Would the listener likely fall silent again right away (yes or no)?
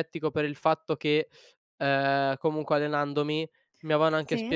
yes